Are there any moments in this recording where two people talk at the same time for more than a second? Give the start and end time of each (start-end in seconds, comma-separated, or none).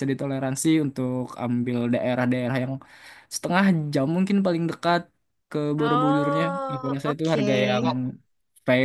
5.8-7.5